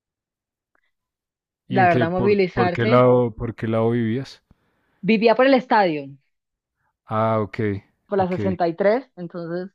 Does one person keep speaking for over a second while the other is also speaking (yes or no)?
yes